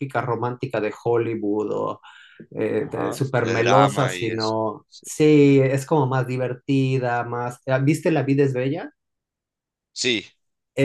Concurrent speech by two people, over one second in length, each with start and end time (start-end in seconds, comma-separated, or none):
2.8-5.0